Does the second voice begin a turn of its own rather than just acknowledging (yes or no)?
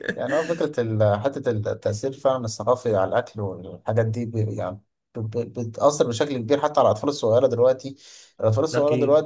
no